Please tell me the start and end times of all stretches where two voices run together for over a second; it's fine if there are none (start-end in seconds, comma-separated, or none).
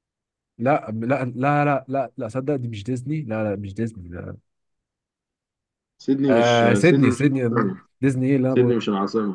6.3-7.8